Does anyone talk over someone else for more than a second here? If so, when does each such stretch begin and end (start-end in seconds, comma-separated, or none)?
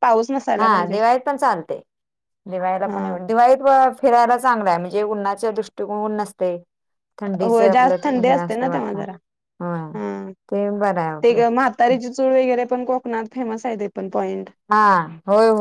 7.5-9.0